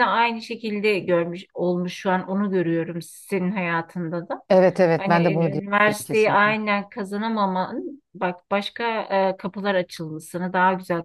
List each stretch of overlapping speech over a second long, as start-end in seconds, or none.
5.0-6.5